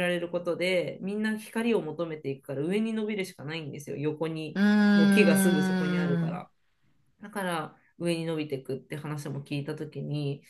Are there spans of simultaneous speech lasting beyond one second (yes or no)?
yes